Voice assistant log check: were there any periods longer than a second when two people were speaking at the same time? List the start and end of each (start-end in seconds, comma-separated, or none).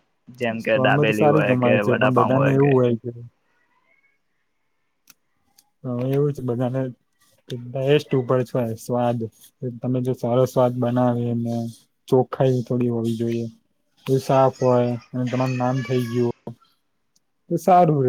0.6-2.3